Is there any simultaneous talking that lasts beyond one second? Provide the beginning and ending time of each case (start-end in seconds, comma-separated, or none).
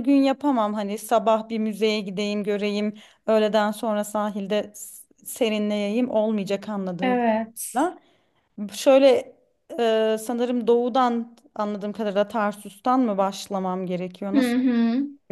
none